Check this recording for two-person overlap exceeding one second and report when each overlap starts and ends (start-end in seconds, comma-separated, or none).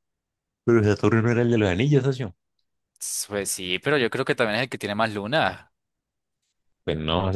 none